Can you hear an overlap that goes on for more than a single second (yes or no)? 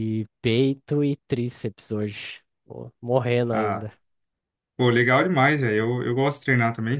no